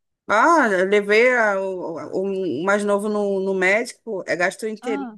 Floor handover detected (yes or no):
no